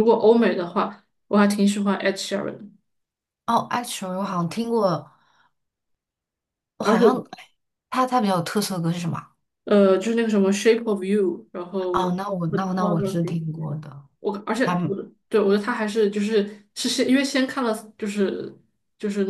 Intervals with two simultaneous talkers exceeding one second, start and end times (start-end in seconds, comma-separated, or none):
11.9-13.7